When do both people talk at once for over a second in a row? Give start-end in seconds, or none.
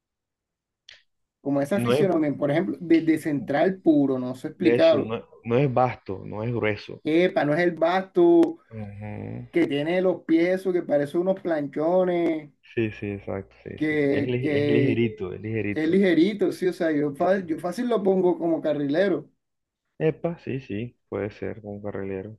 13.8-15.0